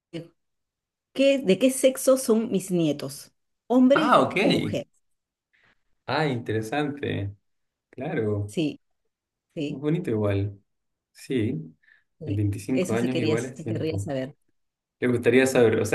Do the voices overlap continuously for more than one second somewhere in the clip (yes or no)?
yes